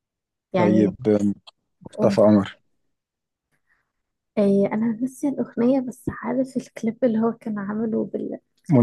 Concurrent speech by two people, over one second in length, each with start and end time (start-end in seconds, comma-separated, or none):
none